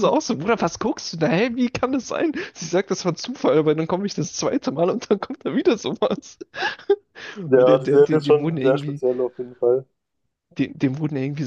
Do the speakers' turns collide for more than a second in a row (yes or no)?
yes